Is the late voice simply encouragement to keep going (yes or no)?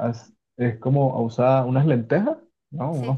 yes